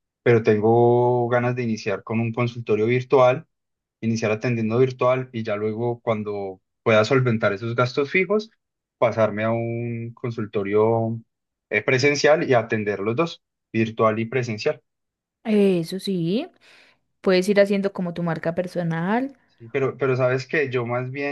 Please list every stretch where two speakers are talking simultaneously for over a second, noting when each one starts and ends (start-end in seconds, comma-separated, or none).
none